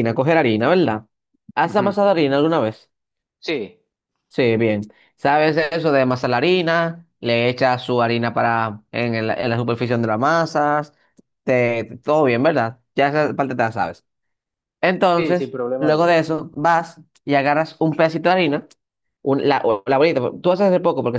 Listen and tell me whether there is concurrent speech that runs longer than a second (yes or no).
yes